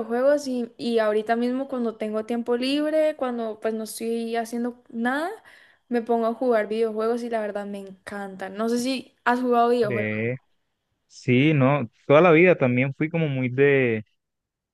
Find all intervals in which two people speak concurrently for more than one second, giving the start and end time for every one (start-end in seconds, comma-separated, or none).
none